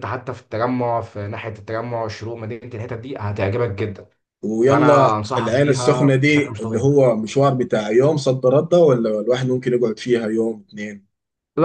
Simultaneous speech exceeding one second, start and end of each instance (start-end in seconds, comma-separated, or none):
4.7-6.8